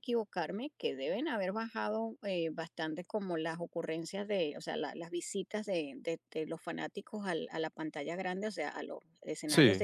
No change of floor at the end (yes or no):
yes